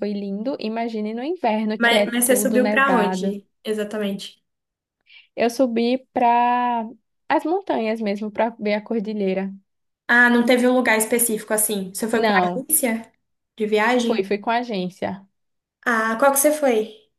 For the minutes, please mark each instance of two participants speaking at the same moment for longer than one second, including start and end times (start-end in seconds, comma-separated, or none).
1.8-3.4